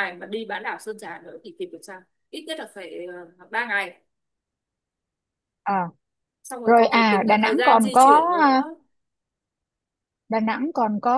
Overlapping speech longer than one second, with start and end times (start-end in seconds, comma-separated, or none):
6.6-8.6